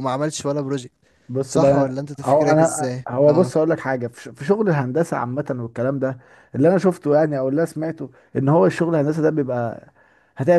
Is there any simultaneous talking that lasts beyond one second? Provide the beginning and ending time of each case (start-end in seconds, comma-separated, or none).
1.5-3.5